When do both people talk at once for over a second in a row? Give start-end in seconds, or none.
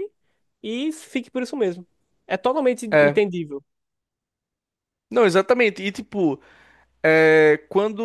none